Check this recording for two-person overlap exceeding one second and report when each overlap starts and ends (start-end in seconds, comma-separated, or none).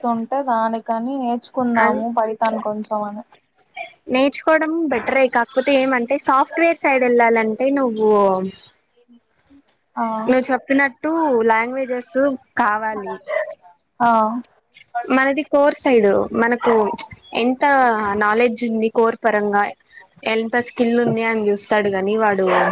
none